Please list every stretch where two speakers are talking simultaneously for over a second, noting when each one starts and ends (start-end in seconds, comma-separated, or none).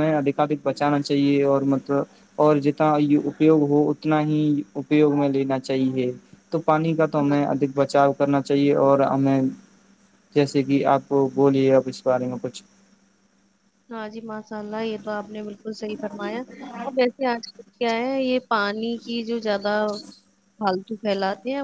none